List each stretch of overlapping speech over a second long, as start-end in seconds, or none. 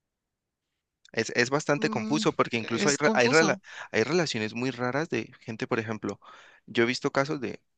1.8-3.6